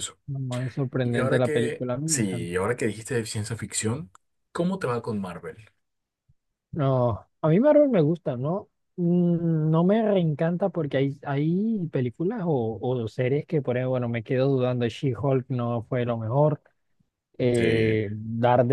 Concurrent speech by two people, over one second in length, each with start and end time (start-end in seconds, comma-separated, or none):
1.0-2.5